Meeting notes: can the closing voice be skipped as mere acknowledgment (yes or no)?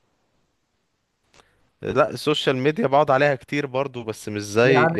no